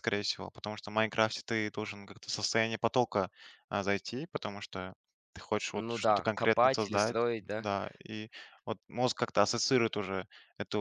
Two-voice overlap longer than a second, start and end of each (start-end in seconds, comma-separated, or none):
5.7-7.7